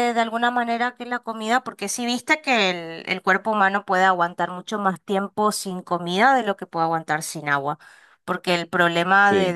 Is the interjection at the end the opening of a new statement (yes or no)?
no